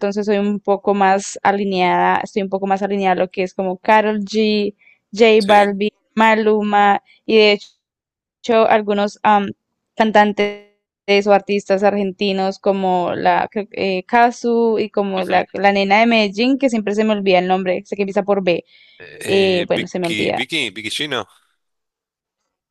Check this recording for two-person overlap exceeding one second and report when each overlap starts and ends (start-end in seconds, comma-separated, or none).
19.2-20.5